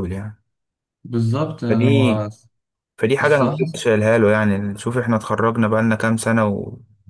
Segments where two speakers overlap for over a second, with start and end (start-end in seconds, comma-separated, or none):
none